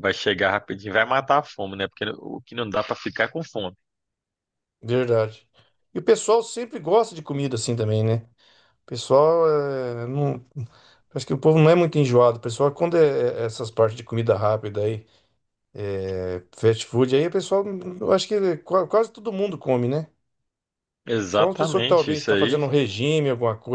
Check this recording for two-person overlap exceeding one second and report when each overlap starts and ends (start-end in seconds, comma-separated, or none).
21.3-22.6